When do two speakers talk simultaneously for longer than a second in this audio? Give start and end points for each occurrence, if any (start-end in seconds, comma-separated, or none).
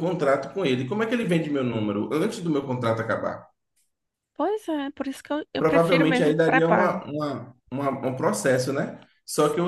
5.6-7.0